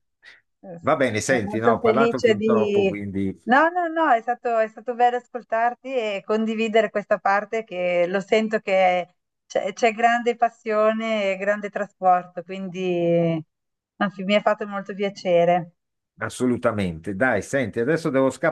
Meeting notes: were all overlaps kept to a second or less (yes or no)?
no